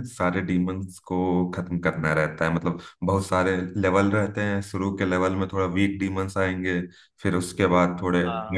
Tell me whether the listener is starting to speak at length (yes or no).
no